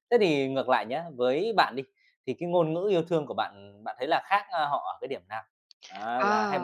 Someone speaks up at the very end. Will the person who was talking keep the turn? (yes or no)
yes